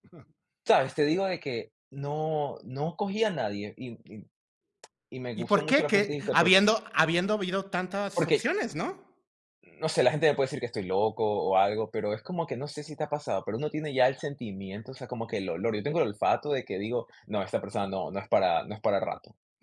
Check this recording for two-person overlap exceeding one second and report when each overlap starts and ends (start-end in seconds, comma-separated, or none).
5.3-6.7